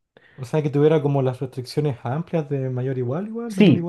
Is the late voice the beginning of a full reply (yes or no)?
yes